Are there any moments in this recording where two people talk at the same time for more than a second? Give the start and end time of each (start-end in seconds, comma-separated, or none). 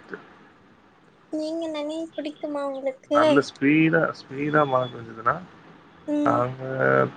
none